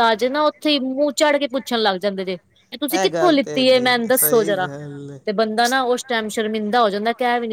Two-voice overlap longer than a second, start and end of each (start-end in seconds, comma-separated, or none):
3.1-4.7